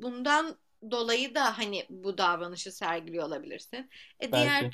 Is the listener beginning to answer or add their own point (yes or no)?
no